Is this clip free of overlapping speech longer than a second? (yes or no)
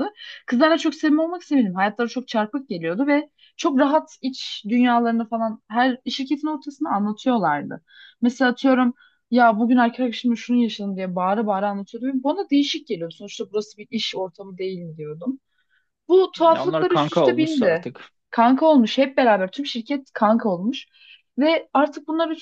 no